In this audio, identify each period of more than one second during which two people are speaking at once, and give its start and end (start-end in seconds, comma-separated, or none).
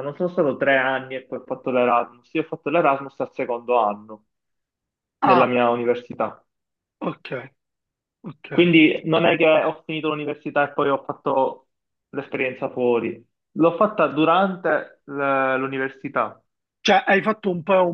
none